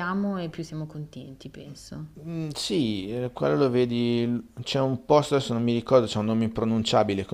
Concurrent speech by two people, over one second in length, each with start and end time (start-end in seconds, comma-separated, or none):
none